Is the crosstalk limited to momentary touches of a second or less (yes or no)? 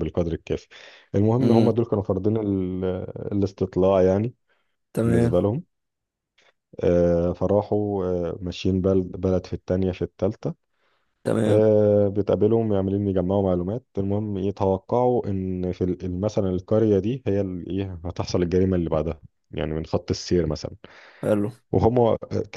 yes